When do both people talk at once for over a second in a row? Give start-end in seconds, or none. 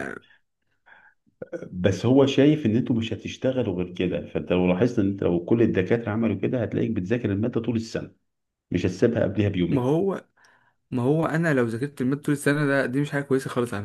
none